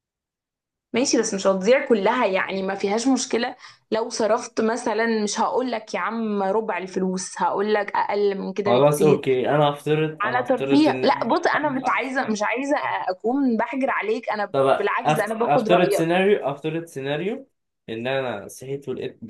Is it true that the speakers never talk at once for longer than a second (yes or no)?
no